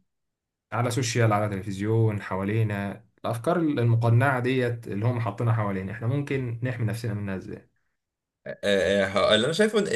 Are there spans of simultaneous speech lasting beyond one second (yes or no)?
no